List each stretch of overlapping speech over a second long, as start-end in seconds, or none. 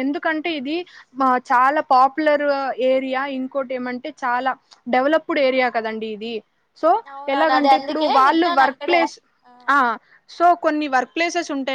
7.3-9.0